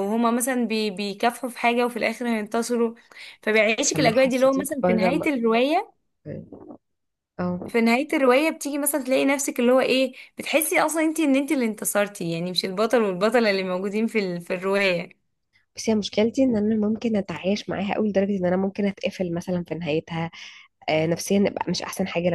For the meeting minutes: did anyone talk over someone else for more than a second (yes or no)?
yes